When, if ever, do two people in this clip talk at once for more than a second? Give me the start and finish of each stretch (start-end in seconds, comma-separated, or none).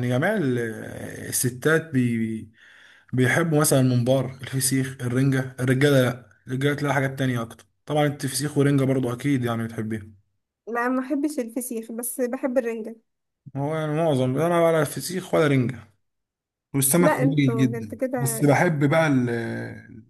17.0-18.5